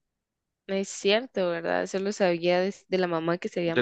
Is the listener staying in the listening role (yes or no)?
no